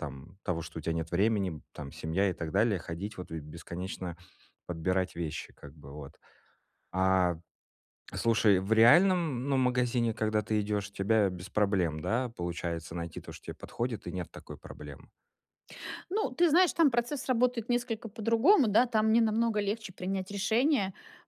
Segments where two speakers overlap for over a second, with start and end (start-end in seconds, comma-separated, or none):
none